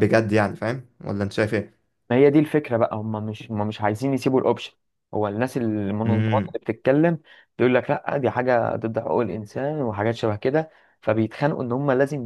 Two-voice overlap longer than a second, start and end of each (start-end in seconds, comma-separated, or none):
none